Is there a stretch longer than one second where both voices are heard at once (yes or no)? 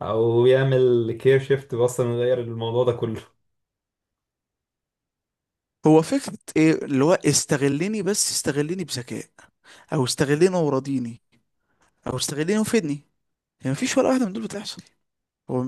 no